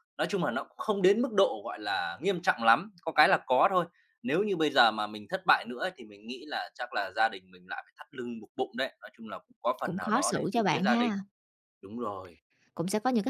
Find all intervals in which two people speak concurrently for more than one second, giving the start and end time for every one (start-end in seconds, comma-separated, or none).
9.8-11.1